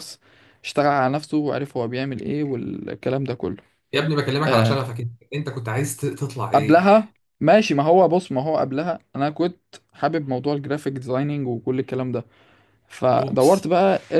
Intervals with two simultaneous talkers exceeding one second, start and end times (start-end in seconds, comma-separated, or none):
none